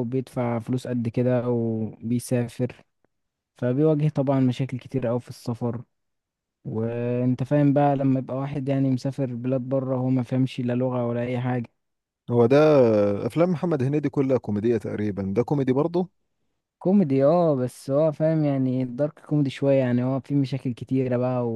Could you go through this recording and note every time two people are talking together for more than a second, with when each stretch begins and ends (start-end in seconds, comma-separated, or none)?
none